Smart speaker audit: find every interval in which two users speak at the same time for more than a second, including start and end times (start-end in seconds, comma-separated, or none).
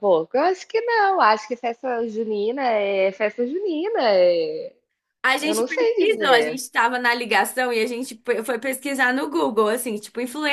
5.4-6.6